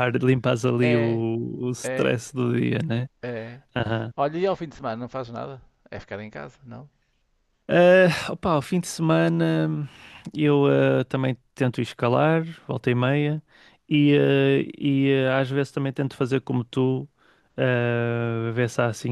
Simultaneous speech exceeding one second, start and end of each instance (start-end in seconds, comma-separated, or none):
none